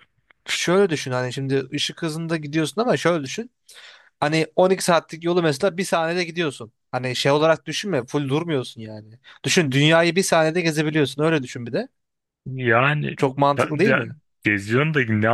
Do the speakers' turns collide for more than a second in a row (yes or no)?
no